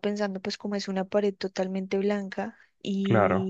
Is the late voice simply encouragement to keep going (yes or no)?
yes